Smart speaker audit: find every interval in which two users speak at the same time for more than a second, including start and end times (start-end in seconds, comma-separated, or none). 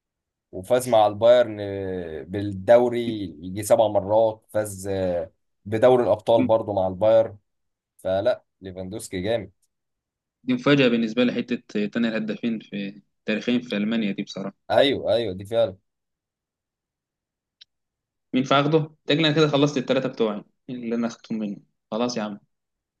none